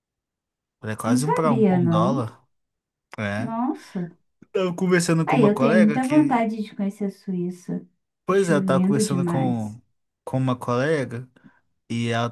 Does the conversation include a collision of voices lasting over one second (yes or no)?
yes